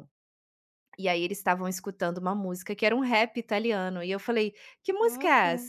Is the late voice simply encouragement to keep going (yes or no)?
yes